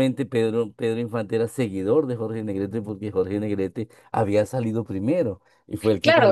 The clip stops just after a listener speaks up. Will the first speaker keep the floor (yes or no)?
no